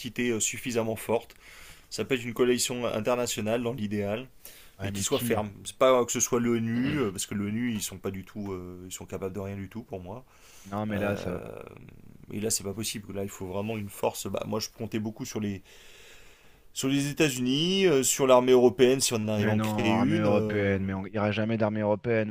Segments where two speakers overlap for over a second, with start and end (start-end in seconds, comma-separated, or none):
19.3-20.8